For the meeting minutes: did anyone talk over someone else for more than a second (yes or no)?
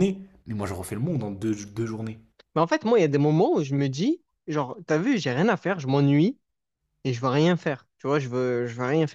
no